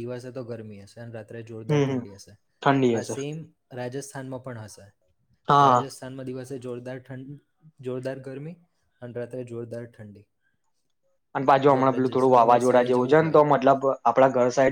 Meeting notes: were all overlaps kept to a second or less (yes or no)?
no